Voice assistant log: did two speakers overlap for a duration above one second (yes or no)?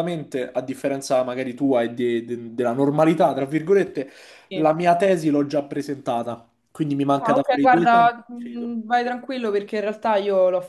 yes